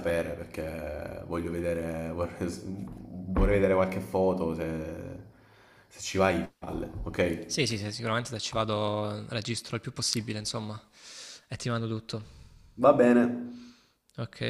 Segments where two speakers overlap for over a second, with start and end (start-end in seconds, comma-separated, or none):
none